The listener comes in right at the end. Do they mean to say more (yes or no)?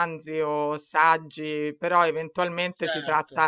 no